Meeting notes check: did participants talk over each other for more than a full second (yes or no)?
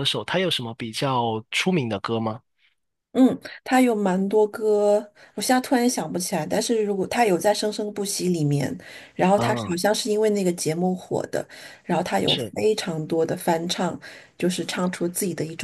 no